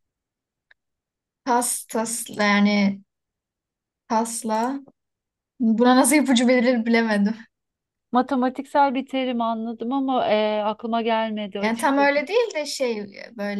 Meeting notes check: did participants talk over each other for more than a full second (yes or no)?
no